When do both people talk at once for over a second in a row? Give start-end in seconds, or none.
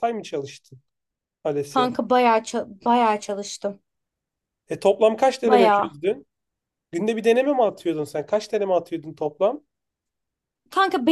none